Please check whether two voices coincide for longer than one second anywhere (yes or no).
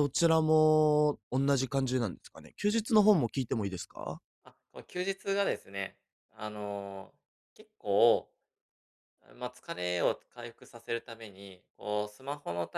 no